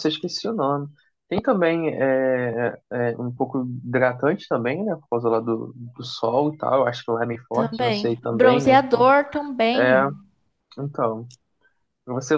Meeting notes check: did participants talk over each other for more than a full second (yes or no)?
yes